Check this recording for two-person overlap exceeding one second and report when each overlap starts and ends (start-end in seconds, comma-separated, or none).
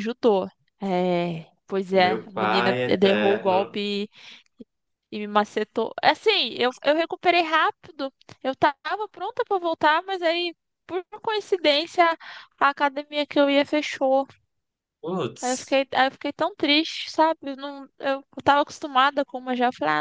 1.9-3.8